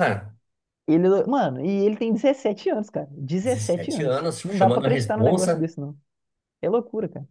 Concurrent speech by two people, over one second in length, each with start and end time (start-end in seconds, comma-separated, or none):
3.4-5.7